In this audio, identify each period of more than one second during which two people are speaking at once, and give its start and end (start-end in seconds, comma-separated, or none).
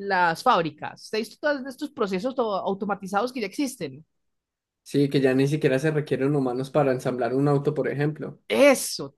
none